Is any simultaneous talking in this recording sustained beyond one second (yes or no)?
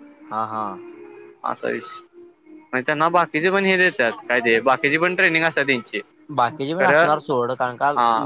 no